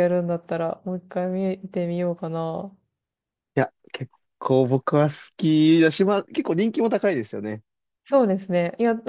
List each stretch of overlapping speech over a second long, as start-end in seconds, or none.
none